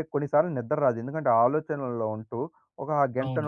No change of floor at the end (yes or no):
yes